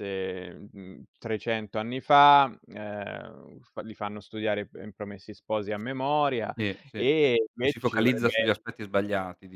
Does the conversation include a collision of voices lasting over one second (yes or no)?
yes